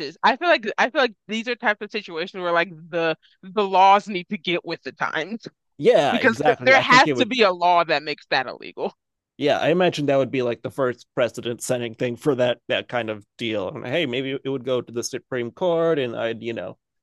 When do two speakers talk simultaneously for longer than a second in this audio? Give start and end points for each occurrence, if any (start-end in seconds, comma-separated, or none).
6.1-7.4